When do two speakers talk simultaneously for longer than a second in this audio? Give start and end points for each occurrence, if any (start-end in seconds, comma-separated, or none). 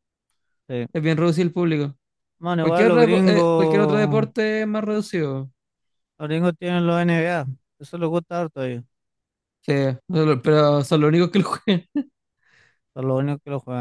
2.6-4.3